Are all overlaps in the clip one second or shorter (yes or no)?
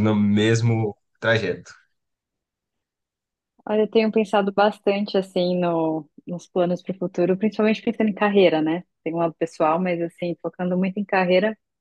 yes